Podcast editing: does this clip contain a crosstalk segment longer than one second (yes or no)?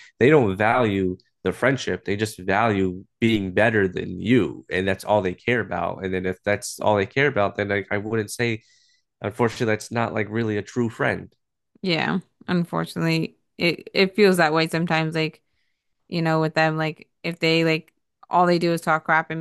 no